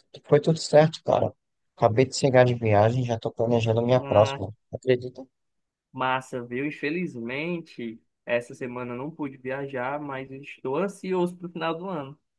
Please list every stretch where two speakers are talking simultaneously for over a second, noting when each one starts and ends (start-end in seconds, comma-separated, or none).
none